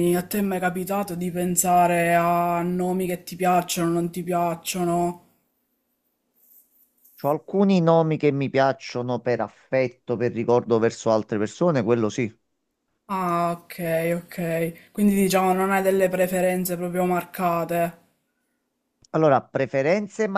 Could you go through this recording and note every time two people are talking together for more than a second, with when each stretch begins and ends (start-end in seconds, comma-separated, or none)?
none